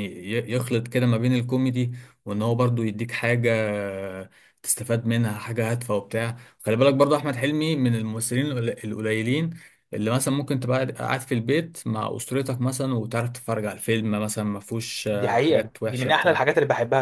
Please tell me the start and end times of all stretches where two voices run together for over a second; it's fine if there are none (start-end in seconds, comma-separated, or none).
15.1-16.4